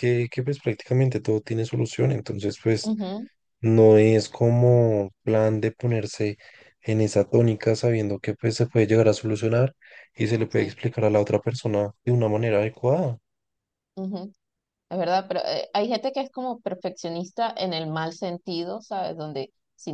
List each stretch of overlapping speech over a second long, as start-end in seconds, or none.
none